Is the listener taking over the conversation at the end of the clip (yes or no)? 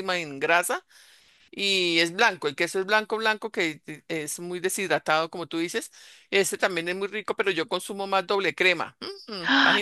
yes